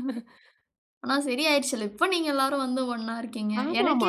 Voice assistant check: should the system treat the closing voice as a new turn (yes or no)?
yes